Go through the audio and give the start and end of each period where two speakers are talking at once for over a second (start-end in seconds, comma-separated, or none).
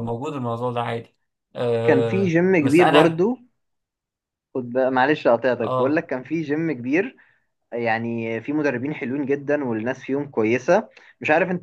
1.8-3.2